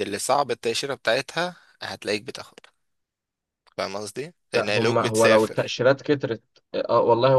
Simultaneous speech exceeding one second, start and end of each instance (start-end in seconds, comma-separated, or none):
4.5-5.8